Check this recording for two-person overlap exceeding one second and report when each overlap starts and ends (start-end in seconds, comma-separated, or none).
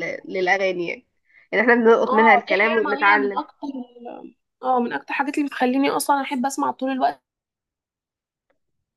2.1-3.4